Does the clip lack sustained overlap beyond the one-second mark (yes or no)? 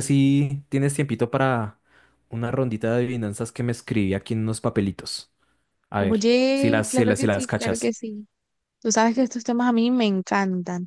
no